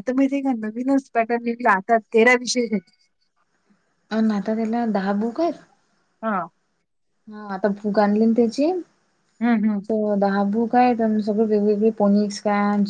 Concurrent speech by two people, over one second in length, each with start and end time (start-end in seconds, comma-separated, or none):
none